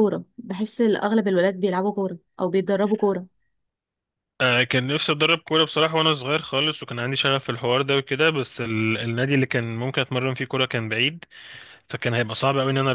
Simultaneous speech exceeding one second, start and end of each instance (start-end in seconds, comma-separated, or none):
none